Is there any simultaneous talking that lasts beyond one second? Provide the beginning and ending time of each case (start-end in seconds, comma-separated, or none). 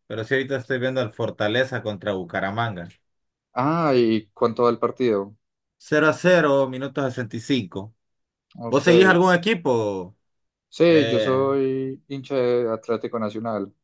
none